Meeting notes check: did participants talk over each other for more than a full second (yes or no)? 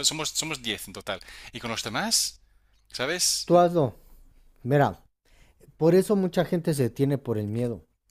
no